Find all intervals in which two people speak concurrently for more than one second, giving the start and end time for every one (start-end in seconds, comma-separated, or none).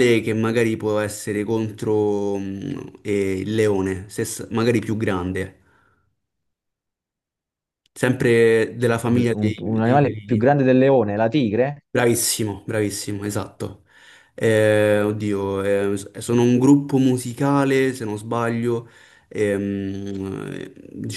9.1-10.5